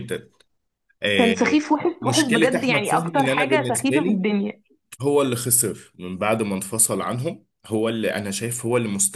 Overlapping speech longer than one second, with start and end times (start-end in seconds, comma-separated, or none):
2.0-4.2